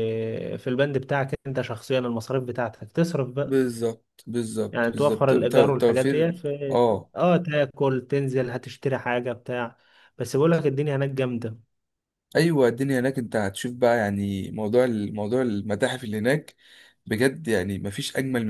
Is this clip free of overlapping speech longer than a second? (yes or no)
no